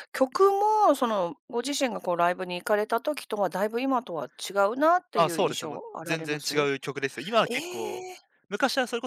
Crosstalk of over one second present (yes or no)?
yes